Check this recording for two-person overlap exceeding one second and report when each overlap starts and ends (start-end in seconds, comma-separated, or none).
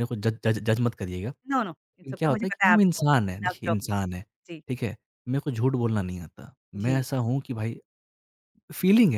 1.8-4.2